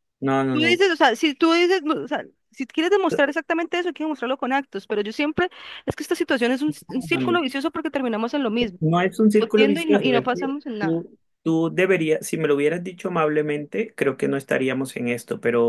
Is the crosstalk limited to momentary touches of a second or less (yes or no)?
no